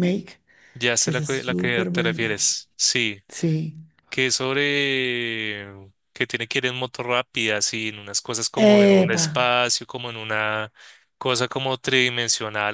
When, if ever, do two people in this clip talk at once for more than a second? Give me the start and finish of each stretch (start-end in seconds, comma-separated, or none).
1.0-2.5